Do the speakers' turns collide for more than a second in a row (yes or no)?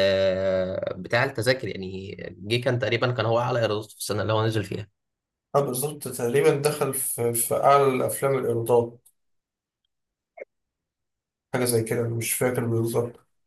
no